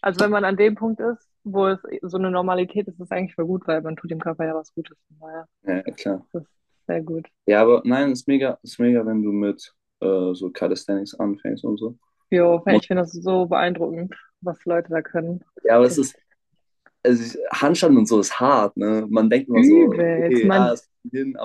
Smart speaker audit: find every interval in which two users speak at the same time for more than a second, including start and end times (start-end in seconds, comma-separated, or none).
19.5-20.8